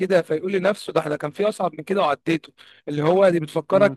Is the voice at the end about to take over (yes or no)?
no